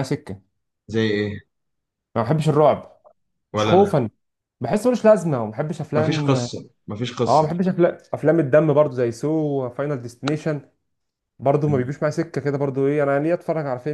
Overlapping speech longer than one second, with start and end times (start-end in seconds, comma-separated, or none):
none